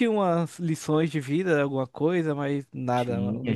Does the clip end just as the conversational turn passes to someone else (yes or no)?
yes